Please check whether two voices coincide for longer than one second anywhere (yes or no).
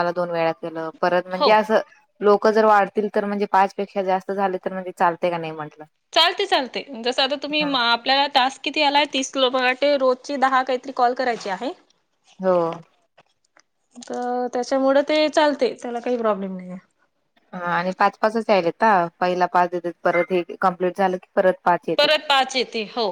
no